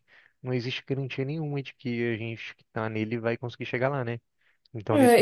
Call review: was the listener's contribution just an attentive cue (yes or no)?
no